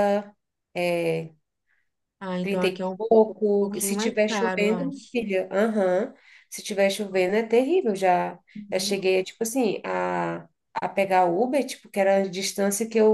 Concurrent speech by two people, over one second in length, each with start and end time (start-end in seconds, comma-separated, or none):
3.6-5.2